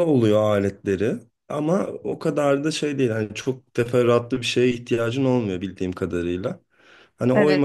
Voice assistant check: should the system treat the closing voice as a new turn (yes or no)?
no